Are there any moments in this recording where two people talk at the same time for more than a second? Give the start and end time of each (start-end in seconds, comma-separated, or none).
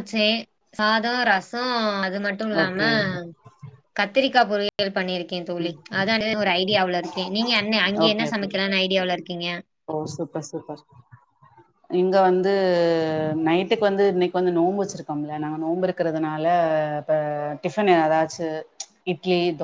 none